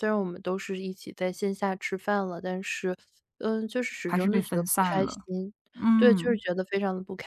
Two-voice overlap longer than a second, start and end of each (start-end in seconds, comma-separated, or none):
4.0-5.3